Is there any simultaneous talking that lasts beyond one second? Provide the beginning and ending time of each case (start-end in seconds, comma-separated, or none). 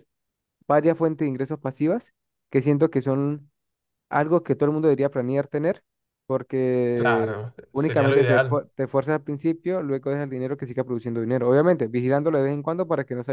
6.9-8.6